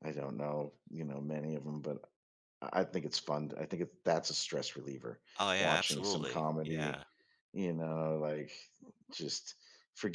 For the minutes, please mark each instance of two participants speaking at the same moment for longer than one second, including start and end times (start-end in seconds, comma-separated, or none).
5.6-7.0